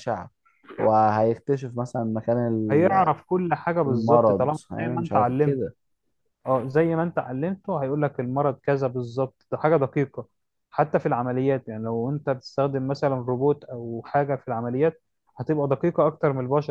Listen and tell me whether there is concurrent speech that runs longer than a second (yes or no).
yes